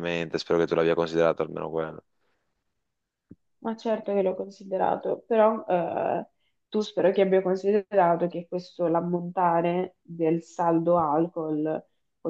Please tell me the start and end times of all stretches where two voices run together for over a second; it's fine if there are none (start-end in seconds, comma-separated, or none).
none